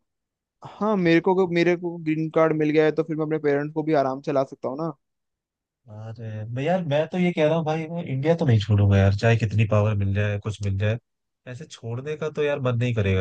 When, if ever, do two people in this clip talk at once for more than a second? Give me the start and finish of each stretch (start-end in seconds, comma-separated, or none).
none